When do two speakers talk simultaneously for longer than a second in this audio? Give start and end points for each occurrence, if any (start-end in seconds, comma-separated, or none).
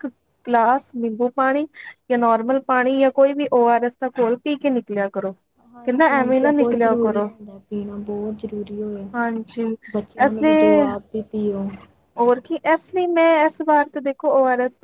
5.7-7.3